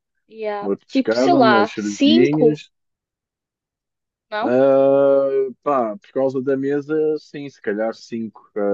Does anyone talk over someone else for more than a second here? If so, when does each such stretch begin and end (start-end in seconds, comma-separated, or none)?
0.6-2.6